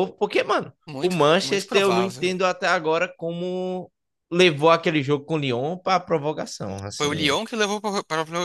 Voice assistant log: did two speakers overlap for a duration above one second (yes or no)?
yes